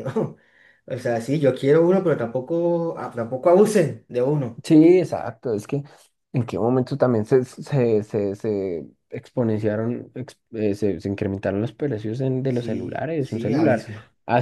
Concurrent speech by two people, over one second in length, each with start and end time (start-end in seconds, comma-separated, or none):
12.5-13.9